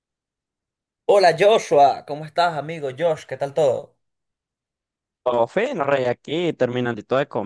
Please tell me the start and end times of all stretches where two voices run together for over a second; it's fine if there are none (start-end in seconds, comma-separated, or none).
none